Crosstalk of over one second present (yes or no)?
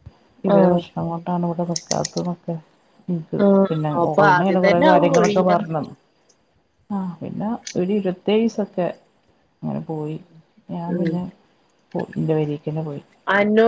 yes